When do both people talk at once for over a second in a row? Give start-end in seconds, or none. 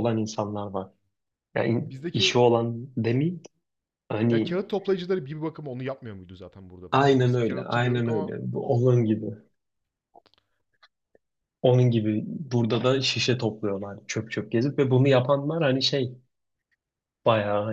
6.9-8.3